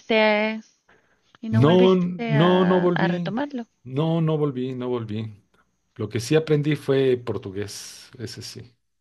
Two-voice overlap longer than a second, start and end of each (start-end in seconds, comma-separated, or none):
1.5-3.3